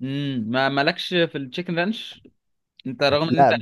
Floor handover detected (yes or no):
no